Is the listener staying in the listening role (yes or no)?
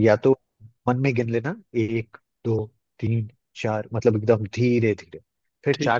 yes